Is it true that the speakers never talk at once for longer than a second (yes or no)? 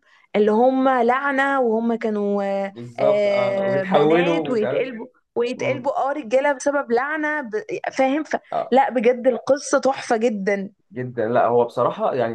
no